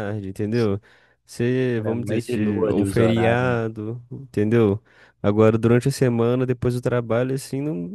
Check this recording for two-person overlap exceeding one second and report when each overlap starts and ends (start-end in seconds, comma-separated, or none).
1.8-3.6